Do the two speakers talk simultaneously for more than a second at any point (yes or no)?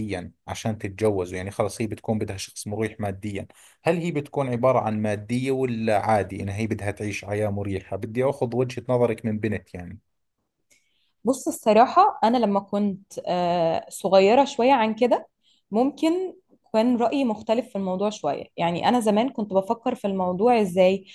no